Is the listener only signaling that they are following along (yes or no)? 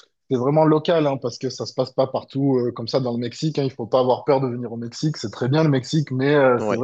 yes